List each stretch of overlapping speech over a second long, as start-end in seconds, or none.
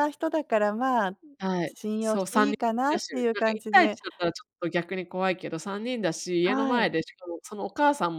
1.6-4.0